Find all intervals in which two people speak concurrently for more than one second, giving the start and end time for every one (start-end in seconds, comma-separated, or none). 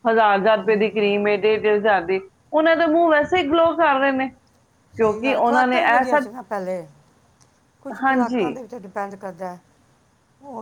5.0-6.2